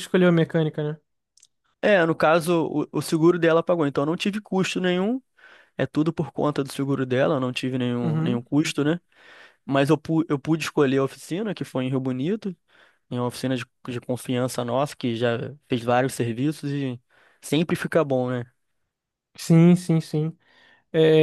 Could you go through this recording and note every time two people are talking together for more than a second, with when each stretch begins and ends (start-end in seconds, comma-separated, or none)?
none